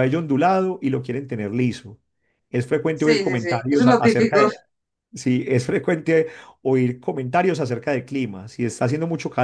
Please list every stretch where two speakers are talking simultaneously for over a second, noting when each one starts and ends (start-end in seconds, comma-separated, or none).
2.9-4.5